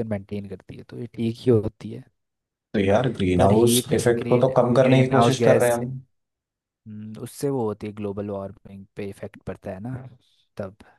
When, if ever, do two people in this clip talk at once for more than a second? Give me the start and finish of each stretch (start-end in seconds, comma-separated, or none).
3.4-5.9